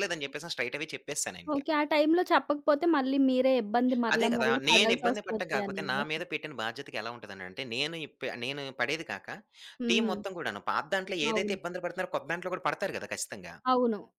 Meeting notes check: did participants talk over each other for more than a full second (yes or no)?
yes